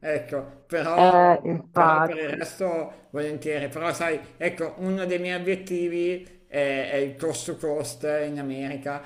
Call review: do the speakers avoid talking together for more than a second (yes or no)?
no